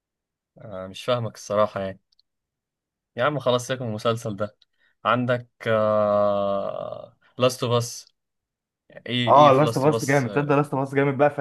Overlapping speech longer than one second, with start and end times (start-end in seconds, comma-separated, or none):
9.3-10.6